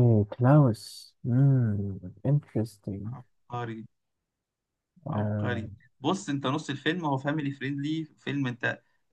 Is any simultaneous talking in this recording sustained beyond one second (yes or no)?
no